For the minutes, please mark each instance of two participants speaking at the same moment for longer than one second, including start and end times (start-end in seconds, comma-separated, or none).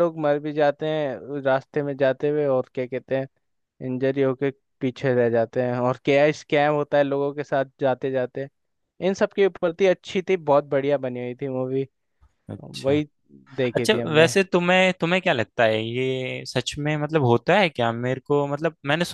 none